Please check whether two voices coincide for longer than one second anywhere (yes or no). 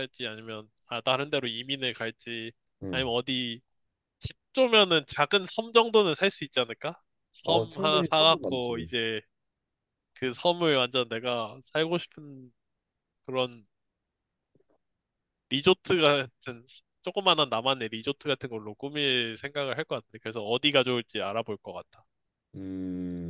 yes